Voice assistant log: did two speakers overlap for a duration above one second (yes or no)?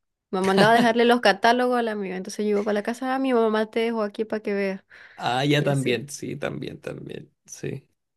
no